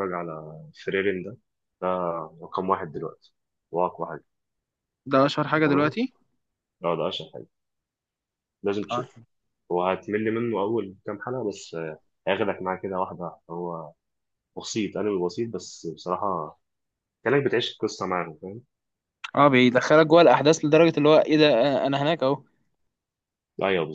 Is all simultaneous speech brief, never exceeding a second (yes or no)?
yes